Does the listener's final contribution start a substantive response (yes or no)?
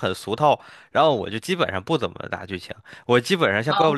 no